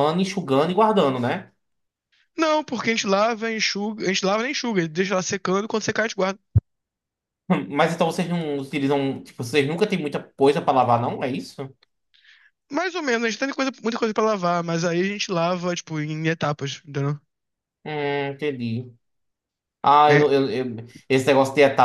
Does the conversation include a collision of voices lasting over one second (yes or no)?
no